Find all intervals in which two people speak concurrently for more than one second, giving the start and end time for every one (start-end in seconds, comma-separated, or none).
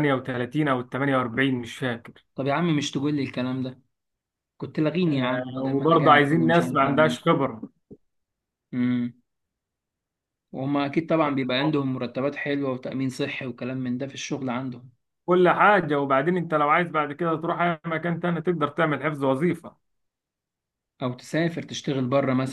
5.1-7.2